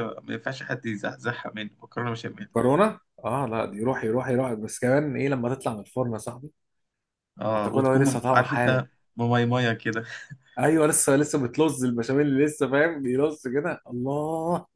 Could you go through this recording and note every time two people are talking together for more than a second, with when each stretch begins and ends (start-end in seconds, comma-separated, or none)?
7.5-8.8